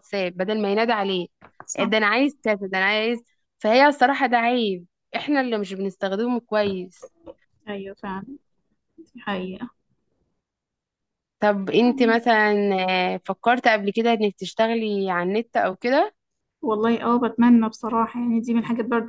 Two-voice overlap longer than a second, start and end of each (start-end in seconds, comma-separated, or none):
none